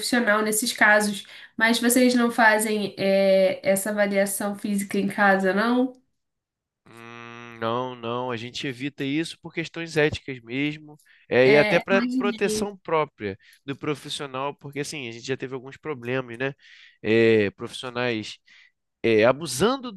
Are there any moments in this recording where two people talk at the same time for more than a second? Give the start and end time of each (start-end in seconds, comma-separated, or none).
11.4-12.7